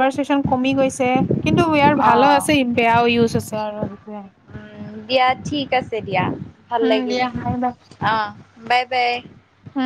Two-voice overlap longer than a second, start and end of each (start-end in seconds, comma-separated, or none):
none